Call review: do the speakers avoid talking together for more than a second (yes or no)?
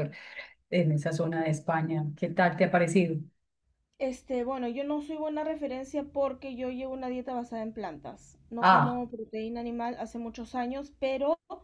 yes